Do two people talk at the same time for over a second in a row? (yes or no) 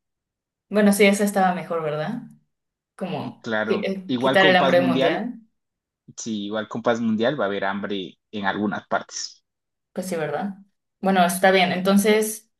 yes